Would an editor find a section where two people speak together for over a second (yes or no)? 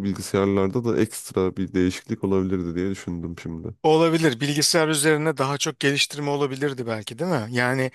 no